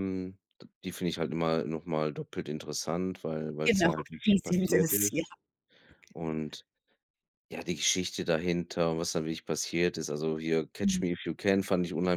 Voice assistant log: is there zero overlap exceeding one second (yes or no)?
no